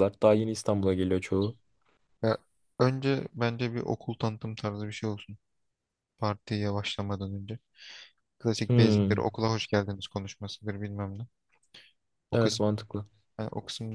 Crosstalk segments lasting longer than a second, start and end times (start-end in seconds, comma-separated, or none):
none